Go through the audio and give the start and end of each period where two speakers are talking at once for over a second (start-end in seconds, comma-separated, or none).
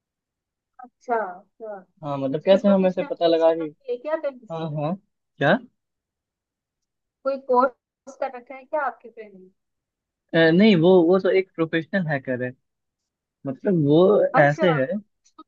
2.4-3.7